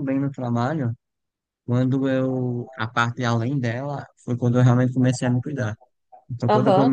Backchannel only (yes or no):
no